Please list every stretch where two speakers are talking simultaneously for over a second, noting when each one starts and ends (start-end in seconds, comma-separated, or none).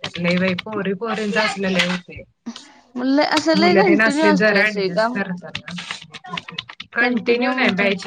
3.6-5.2